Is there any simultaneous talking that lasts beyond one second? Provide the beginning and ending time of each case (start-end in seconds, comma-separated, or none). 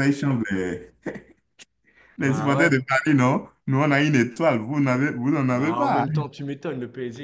none